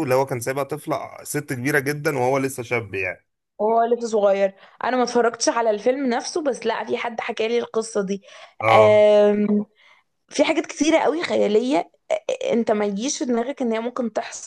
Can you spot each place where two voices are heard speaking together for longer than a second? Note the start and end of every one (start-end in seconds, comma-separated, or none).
none